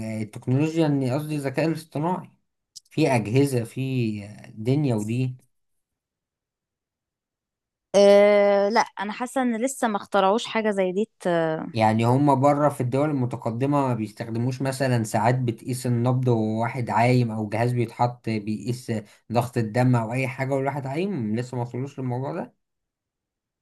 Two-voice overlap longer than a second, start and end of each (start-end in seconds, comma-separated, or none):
none